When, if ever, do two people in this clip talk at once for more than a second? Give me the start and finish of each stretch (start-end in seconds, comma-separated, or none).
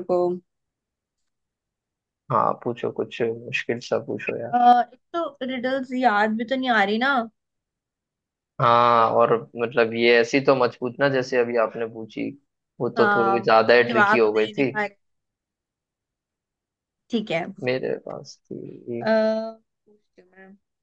13.0-14.7